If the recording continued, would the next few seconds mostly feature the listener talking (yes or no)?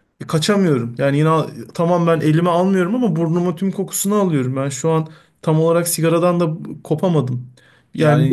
yes